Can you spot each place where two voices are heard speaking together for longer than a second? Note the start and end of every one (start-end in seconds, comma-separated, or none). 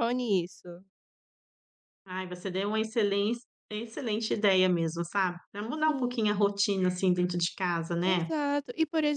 none